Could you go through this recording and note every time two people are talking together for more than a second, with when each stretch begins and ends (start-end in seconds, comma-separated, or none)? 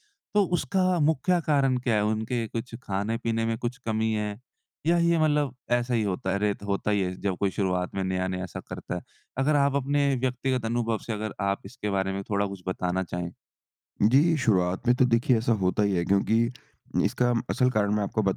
none